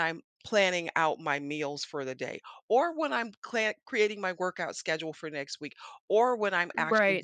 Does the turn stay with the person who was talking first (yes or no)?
yes